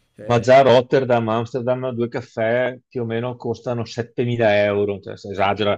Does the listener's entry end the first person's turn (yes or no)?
no